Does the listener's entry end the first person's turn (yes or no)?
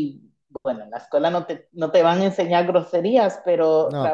no